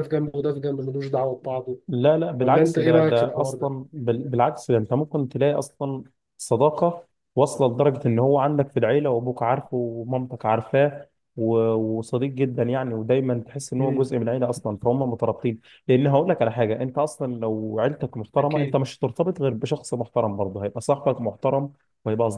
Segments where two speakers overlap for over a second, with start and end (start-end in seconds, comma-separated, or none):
2.4-3.7